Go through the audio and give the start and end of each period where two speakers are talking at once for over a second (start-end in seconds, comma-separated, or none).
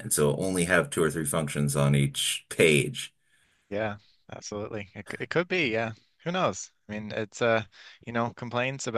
none